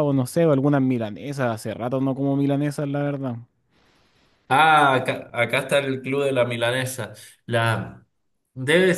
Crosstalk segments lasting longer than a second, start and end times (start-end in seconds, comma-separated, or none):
none